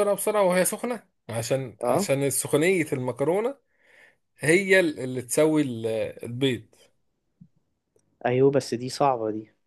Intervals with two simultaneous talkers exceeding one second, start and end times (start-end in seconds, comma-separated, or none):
none